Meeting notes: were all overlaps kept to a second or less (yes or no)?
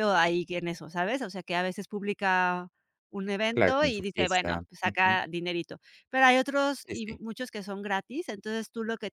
no